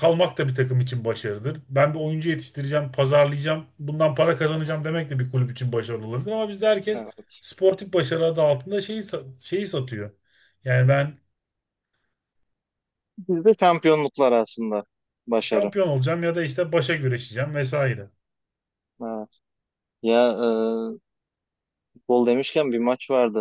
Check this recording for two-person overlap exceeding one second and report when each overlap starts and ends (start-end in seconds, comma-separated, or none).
none